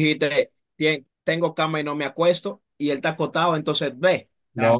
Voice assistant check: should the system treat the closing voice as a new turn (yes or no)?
yes